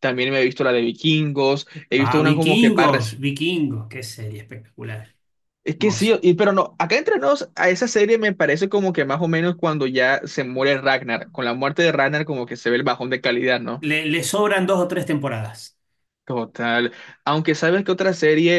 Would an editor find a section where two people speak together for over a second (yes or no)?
yes